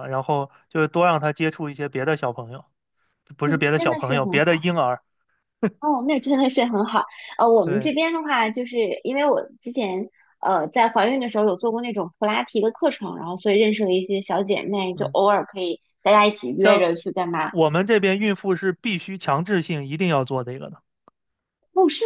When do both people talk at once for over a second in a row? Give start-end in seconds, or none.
3.4-4.7